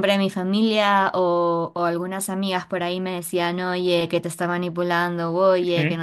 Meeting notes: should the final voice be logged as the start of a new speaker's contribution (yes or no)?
no